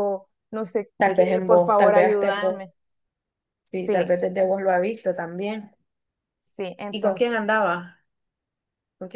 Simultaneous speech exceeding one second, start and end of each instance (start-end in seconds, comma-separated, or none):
1.0-2.6